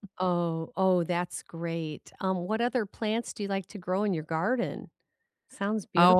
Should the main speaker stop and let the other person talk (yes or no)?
yes